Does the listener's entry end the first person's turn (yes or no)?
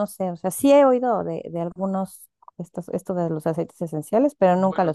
yes